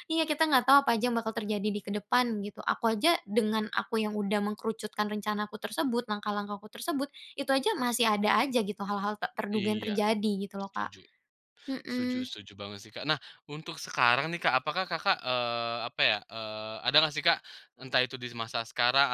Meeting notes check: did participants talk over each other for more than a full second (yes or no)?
no